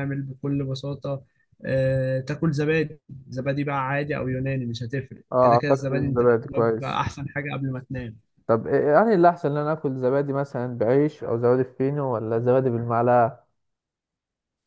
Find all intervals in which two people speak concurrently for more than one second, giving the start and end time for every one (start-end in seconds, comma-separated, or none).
5.3-7.0